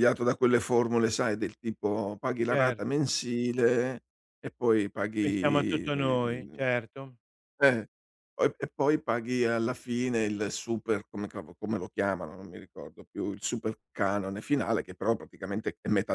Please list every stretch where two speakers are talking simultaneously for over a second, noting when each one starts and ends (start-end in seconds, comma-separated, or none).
5.2-6.6